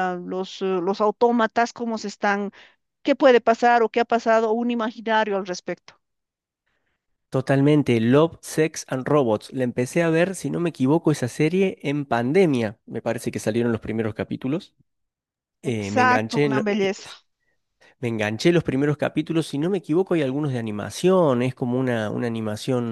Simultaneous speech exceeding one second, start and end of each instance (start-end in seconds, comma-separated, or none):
15.6-16.9